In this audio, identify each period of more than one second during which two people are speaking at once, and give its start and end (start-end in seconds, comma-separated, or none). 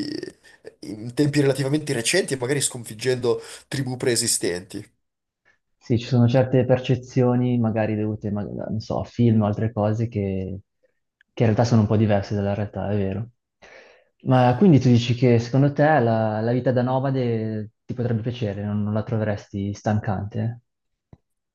none